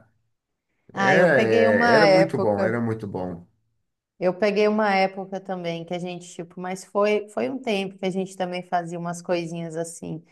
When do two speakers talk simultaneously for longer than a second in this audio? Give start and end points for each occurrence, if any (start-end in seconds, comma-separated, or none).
0.9-2.8